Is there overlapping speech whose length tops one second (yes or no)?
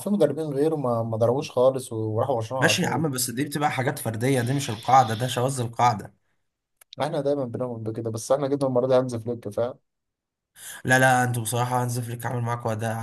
no